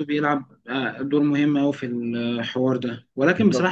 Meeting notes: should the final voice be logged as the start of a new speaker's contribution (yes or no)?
no